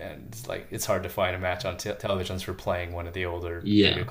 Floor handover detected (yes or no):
no